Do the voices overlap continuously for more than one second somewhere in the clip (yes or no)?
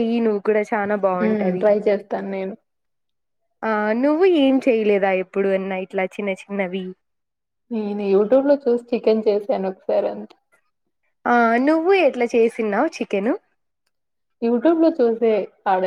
no